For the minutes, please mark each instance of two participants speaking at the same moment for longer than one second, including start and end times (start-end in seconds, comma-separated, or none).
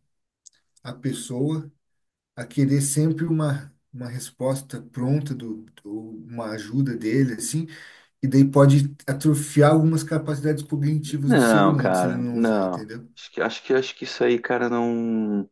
11.3-13.1